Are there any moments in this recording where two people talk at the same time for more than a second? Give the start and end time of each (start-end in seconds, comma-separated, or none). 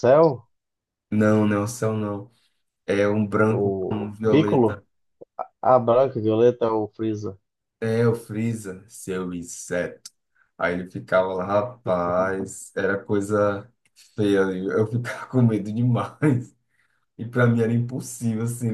3.5-4.8